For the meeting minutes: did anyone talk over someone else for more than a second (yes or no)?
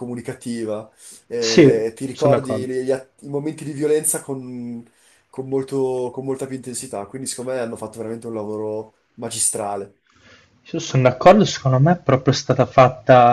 yes